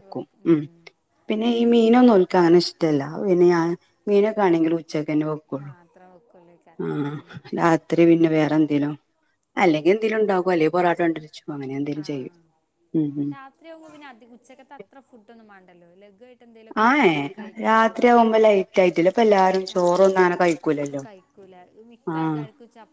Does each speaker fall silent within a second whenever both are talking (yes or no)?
yes